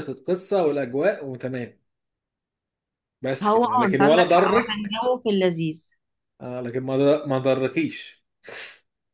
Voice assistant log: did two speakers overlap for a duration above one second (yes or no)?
yes